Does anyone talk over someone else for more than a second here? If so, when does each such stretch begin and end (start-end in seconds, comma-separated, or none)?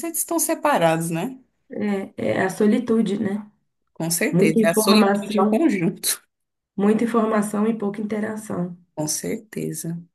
4.3-5.6